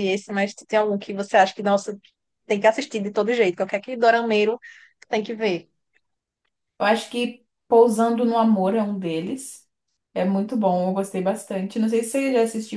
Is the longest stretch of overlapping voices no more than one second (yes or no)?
yes